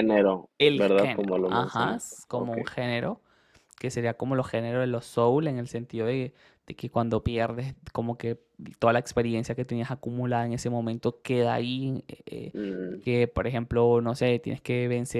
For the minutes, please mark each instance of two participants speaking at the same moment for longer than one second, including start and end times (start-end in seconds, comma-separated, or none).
0.6-2.6